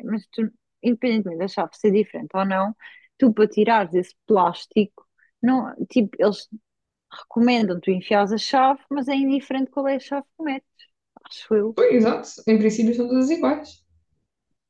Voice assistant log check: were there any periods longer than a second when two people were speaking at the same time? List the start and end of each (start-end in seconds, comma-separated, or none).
none